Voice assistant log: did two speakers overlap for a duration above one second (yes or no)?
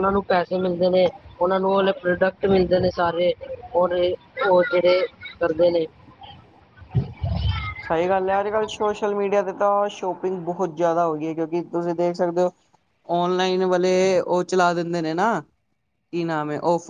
no